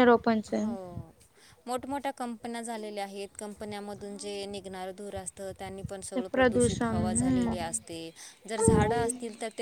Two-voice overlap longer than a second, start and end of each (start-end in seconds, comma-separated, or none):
6.2-8.0